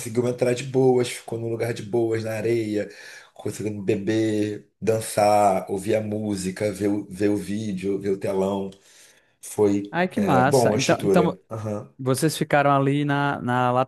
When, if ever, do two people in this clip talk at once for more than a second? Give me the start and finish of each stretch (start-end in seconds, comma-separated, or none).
9.9-11.4